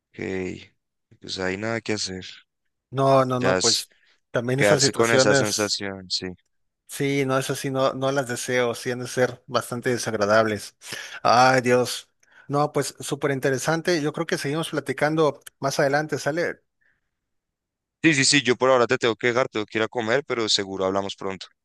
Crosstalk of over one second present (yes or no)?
yes